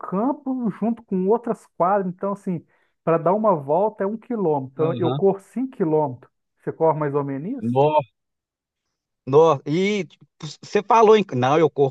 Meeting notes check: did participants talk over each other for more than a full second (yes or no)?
no